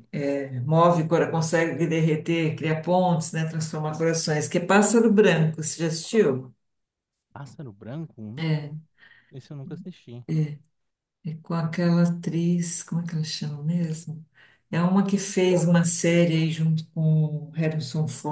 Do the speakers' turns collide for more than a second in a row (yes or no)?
no